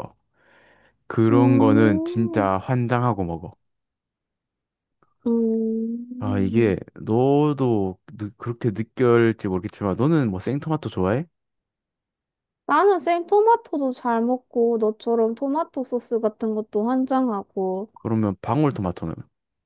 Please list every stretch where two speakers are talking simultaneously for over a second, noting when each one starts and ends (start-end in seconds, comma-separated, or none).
1.3-2.5